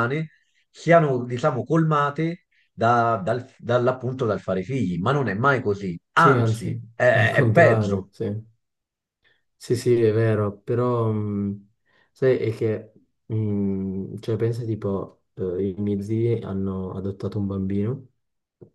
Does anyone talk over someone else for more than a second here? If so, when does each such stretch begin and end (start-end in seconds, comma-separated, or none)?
6.1-8.1